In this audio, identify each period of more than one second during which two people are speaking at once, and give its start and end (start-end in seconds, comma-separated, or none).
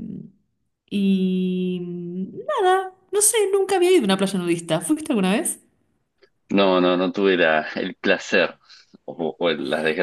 none